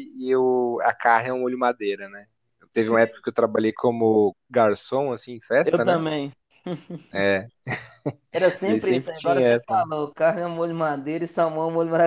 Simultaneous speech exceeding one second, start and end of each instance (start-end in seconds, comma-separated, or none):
8.6-9.8